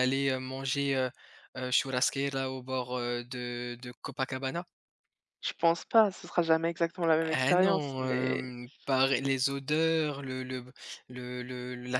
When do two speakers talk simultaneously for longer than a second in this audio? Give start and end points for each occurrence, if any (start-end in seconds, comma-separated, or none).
7.2-8.5